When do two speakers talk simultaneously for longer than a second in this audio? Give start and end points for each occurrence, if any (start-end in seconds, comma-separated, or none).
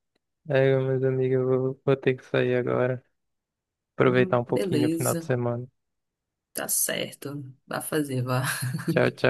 4.0-5.3